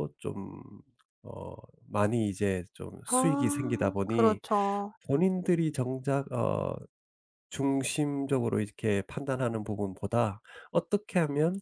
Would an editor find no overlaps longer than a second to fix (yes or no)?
no